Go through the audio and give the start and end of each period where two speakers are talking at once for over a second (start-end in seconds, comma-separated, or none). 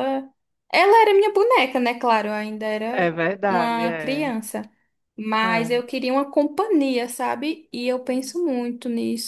2.9-4.3